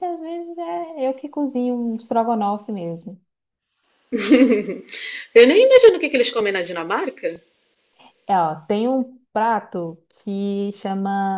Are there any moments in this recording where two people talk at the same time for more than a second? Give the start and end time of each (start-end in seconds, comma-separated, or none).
none